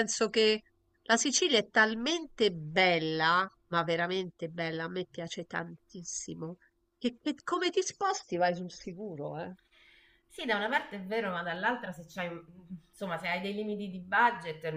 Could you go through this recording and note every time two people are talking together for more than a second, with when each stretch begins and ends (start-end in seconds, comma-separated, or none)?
none